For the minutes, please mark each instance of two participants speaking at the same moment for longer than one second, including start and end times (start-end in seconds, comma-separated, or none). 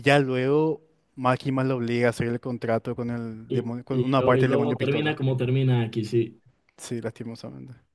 3.5-5.2